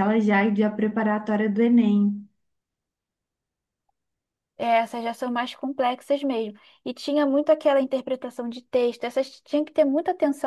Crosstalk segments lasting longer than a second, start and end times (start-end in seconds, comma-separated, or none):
none